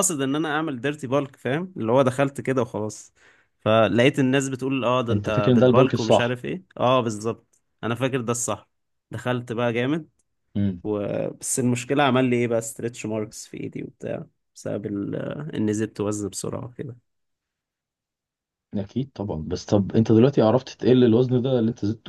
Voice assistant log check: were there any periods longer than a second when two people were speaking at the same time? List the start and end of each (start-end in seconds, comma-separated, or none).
5.1-6.4